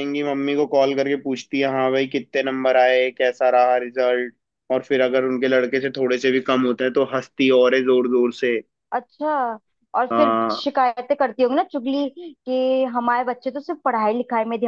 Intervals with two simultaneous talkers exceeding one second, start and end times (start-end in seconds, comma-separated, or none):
none